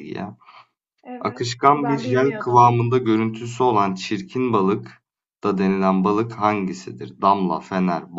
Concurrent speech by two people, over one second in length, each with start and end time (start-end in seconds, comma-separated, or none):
1.2-2.7